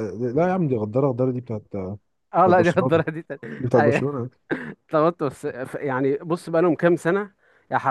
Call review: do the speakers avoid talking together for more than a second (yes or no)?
yes